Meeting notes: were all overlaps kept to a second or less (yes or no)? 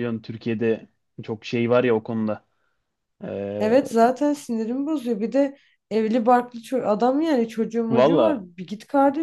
yes